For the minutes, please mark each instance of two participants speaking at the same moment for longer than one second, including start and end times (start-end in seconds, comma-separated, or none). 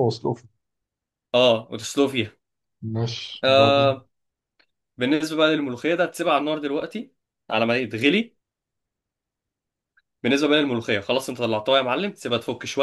none